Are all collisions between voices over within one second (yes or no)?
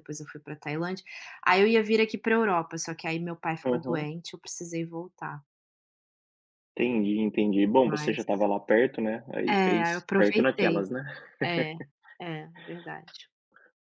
no